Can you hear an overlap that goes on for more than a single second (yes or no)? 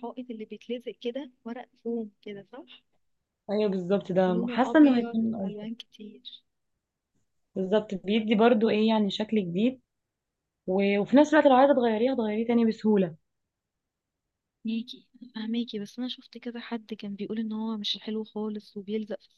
yes